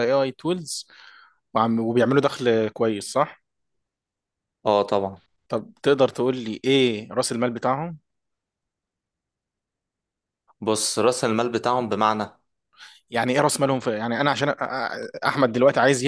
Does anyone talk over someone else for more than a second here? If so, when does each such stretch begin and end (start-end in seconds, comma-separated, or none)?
none